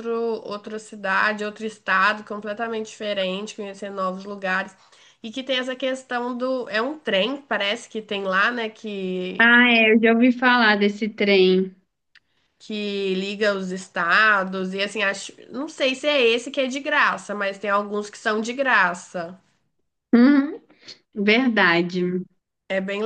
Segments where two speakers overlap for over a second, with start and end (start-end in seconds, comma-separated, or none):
none